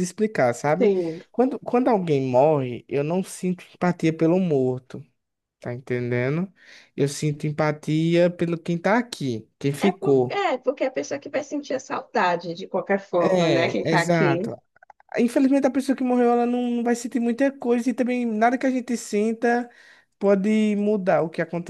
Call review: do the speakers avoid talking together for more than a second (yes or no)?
no